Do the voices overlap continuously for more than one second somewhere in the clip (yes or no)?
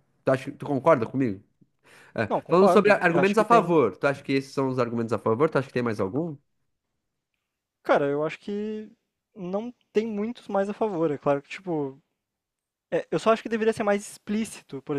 yes